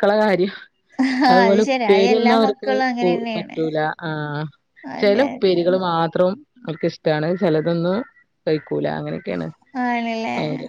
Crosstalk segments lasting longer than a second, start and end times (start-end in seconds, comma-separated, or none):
1.3-3.6